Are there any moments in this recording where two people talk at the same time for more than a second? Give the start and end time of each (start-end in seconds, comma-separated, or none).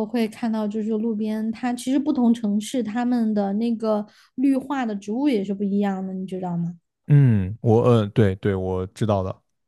none